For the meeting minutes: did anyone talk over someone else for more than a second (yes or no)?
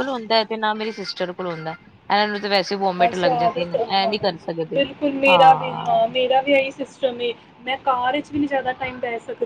no